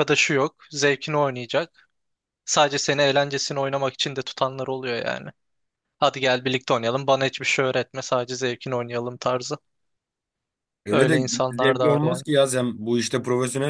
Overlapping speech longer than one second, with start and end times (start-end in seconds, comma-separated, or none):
10.9-12.2